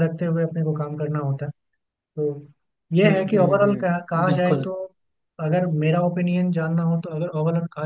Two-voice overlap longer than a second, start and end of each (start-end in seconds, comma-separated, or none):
3.0-4.7